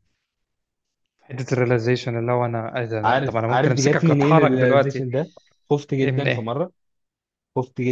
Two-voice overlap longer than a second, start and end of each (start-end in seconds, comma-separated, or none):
3.0-5.1